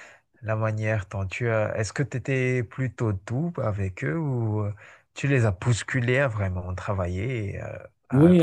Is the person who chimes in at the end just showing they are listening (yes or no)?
no